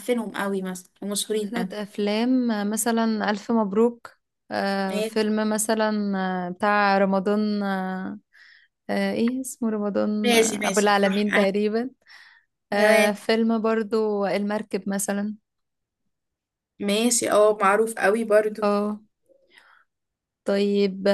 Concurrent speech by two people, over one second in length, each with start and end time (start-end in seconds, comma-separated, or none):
10.2-11.5